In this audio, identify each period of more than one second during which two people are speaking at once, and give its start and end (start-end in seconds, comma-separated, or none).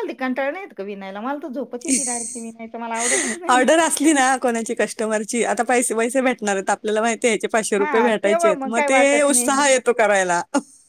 7.8-9.5